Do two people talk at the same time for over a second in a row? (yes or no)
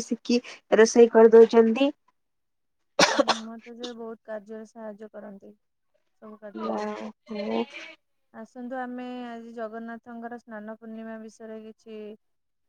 no